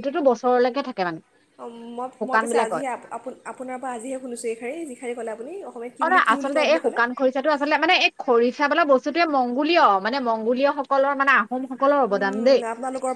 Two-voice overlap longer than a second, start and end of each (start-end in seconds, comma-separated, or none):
none